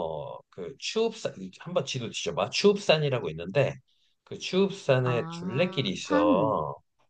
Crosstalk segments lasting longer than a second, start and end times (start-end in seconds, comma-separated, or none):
5.0-6.6